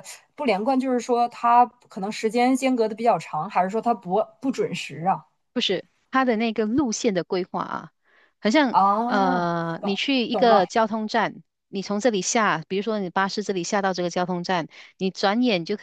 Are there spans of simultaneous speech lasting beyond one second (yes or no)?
yes